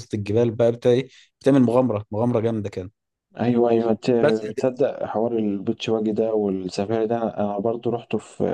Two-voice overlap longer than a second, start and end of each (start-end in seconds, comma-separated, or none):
none